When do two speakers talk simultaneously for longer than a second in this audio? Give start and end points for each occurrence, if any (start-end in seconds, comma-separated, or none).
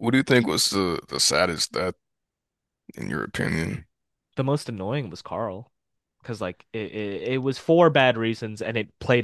none